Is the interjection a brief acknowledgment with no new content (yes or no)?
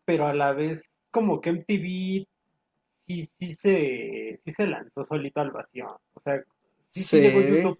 yes